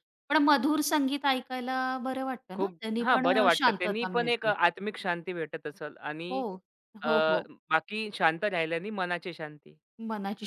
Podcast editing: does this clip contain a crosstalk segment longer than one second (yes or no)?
yes